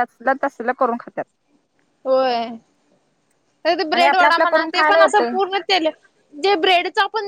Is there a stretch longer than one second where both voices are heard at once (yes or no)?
yes